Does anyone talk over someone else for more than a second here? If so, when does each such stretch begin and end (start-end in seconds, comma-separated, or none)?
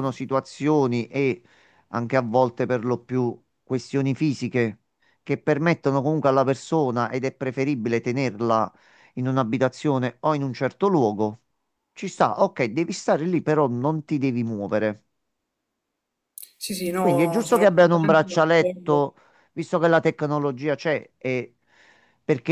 17.0-19.0